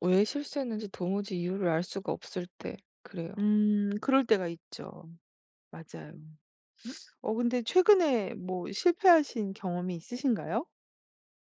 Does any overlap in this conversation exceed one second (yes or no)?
no